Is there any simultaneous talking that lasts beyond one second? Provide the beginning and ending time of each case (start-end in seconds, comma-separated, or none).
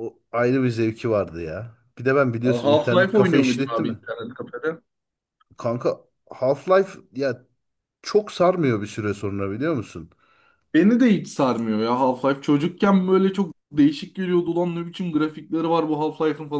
2.5-4.0